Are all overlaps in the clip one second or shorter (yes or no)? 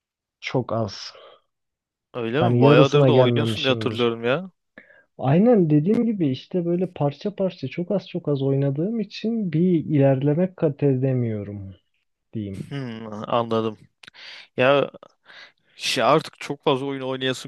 no